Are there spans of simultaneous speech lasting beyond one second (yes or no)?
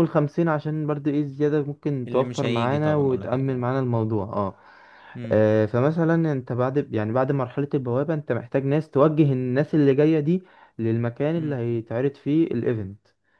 yes